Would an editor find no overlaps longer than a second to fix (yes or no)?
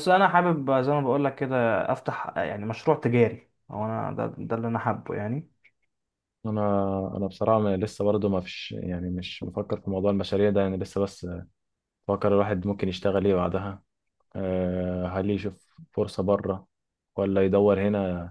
yes